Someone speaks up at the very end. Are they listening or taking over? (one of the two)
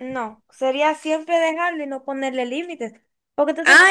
taking over